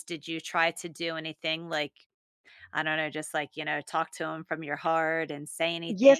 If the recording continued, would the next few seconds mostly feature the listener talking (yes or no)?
yes